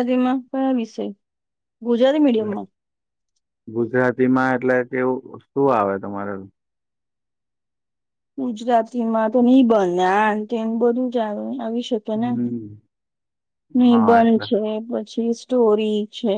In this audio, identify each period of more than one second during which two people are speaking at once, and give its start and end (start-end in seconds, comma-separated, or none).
none